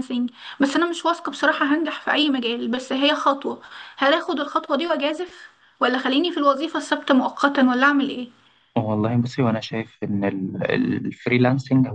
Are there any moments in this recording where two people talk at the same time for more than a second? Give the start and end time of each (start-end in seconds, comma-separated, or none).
none